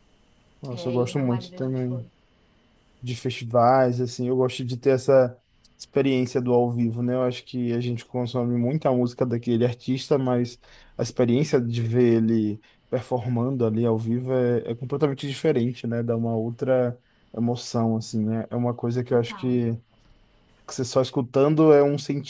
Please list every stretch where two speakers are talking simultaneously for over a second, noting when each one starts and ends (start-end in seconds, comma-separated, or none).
0.7-2.1